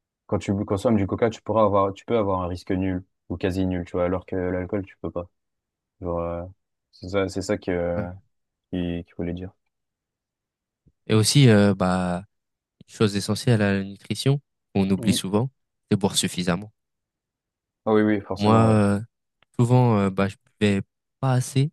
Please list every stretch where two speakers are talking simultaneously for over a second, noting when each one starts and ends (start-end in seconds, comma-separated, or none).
none